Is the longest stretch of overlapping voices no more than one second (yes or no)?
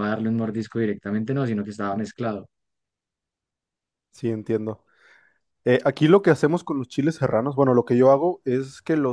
yes